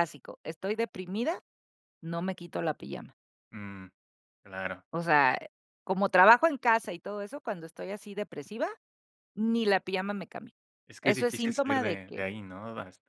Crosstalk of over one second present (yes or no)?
yes